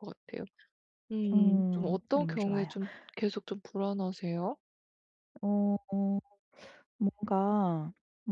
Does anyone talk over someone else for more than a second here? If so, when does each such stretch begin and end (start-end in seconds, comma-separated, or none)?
1.3-2.7